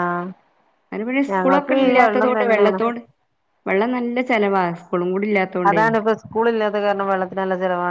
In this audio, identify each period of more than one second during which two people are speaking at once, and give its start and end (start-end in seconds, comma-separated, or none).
1.3-2.8